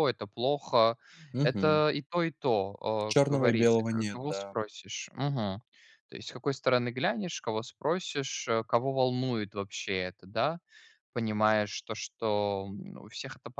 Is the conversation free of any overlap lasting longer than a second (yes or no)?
no